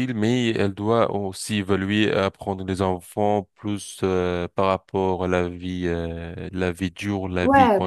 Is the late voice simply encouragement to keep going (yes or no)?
no